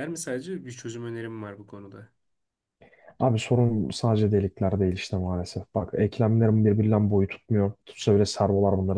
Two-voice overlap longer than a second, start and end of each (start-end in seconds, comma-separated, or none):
none